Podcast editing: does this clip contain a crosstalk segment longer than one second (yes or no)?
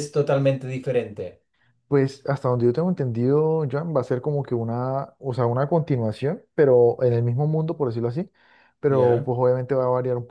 no